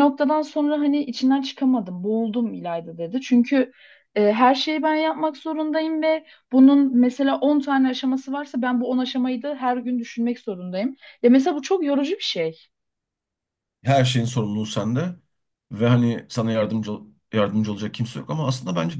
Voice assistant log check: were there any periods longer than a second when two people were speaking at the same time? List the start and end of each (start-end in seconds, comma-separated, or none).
none